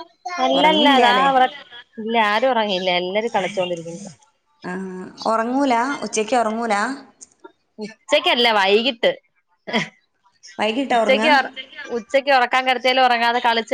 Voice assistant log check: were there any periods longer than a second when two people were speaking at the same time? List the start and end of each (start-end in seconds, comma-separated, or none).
none